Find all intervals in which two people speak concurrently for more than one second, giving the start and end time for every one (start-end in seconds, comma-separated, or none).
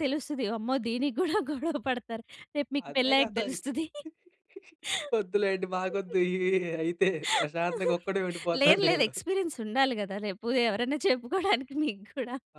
none